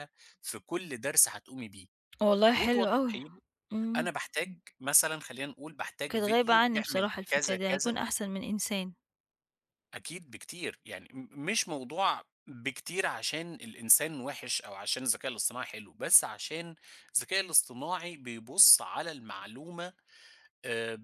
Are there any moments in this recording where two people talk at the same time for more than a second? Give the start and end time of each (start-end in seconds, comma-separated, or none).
6.1-8.0